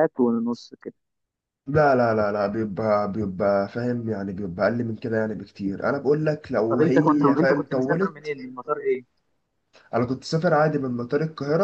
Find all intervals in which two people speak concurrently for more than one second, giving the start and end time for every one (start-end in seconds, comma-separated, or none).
6.7-8.3